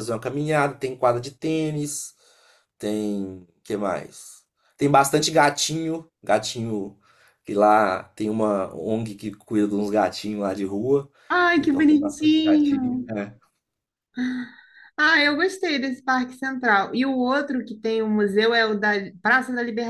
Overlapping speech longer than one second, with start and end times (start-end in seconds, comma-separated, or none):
11.6-13.1